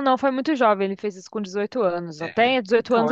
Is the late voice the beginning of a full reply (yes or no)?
no